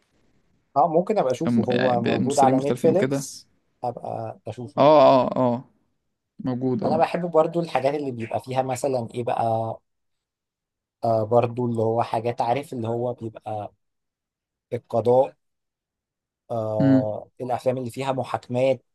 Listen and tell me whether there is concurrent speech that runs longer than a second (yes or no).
yes